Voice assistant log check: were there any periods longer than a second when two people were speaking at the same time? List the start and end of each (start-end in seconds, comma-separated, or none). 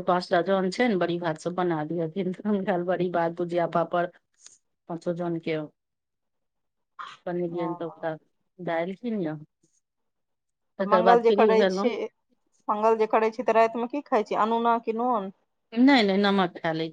none